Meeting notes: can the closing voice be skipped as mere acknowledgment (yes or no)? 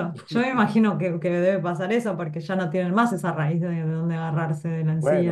no